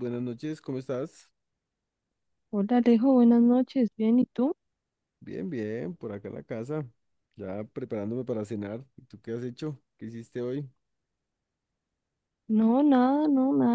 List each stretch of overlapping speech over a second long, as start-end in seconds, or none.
none